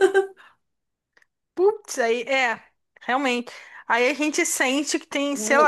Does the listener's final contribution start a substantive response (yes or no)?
yes